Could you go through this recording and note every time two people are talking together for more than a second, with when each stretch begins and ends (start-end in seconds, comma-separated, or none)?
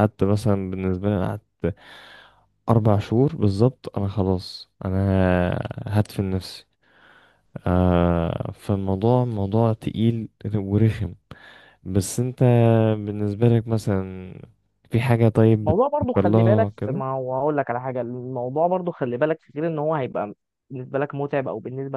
15.6-17.0